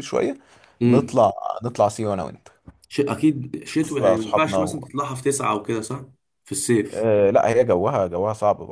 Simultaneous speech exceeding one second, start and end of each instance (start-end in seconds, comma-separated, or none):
3.6-4.9